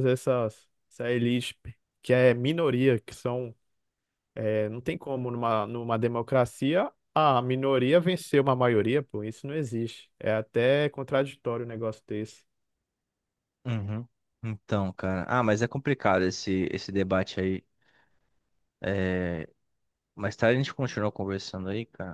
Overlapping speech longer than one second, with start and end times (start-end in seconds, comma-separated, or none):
none